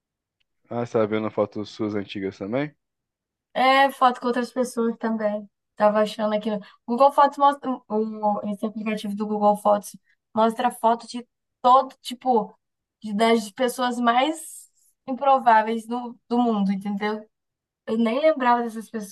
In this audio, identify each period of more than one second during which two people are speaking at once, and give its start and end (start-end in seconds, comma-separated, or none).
none